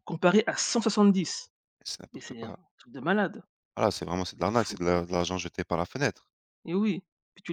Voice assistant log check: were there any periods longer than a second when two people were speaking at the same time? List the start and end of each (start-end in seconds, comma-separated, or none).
none